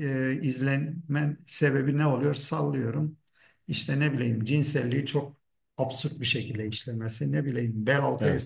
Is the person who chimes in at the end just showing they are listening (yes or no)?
yes